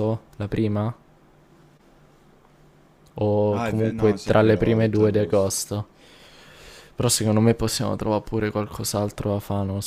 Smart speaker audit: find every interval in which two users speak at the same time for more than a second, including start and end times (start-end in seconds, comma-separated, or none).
3.5-5.5